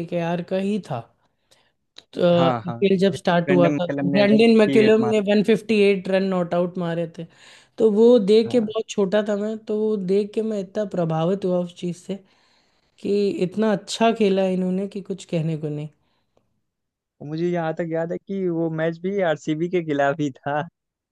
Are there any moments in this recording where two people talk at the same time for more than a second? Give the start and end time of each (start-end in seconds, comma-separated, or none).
2.3-5.2